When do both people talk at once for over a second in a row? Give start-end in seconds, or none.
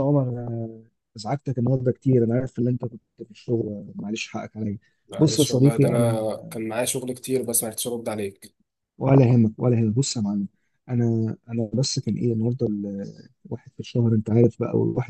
5.2-6.6